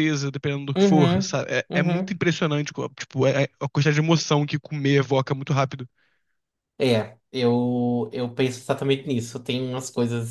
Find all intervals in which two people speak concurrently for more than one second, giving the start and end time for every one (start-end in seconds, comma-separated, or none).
0.8-2.2